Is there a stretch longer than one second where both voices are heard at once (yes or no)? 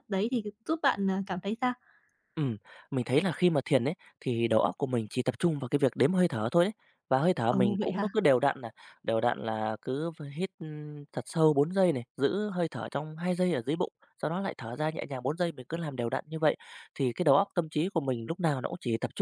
no